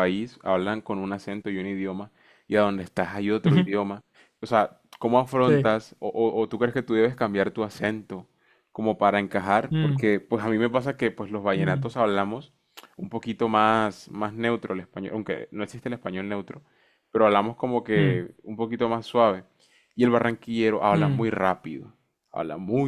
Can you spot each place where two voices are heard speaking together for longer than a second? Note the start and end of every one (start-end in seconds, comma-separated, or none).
none